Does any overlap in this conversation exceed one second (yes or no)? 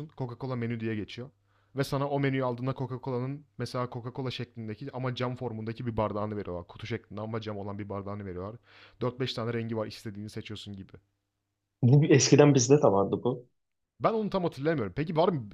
no